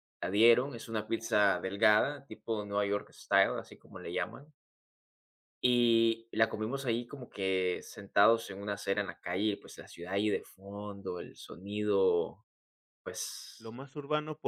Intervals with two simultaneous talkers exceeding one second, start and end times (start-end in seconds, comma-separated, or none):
none